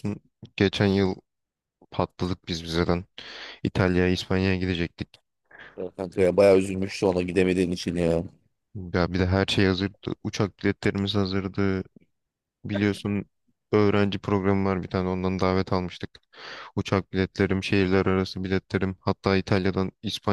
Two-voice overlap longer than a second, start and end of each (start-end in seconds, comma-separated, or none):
none